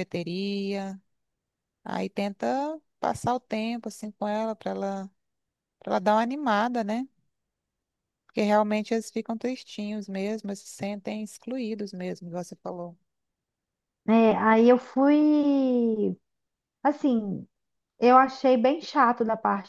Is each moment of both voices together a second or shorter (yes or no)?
yes